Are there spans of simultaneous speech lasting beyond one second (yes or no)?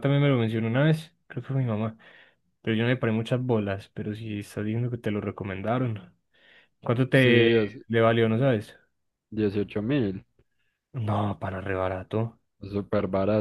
no